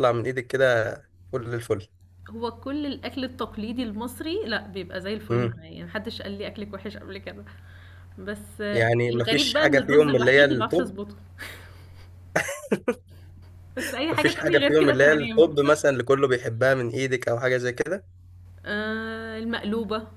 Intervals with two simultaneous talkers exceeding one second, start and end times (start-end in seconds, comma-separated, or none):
8.7-10.9, 14.1-15.5